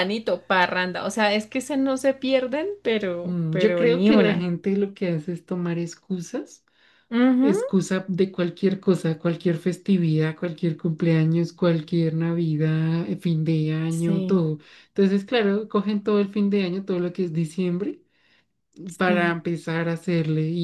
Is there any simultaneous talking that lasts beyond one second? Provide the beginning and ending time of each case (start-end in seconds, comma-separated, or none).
3.2-4.5